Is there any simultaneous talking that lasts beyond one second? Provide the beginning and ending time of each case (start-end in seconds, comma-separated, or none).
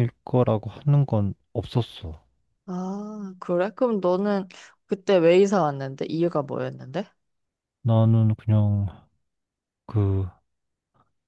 none